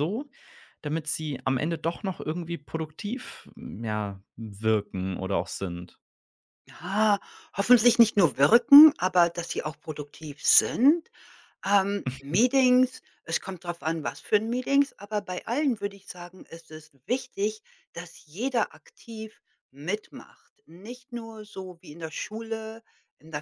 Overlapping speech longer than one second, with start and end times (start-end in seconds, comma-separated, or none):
none